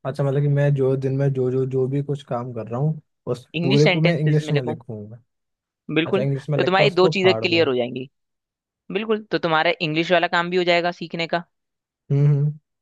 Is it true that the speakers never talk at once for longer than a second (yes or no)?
no